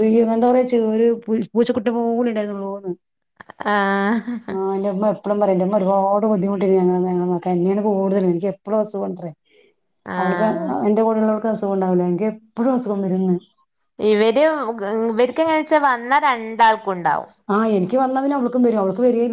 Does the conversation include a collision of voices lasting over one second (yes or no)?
no